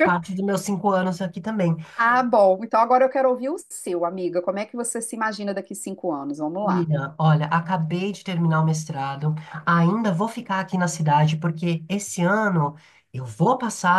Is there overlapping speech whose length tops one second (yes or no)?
no